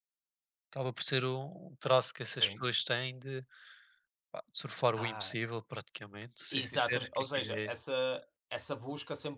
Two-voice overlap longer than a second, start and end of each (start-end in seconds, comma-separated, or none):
6.5-7.8